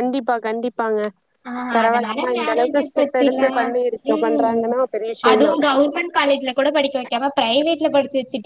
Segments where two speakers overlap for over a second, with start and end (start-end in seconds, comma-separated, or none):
1.8-3.5